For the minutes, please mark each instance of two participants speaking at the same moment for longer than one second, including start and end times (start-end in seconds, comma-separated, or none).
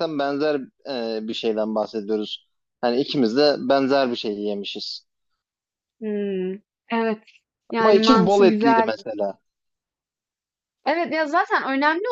7.8-9.1